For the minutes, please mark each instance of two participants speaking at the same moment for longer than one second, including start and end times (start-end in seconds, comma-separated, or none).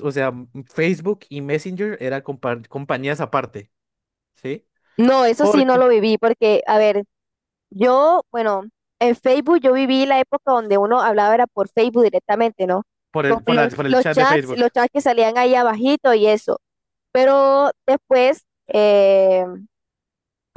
13.2-14.6